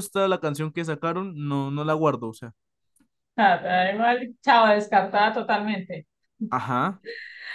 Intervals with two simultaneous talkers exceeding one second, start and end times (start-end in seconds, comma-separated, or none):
none